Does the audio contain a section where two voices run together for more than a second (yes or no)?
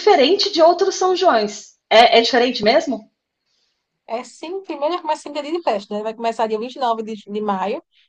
no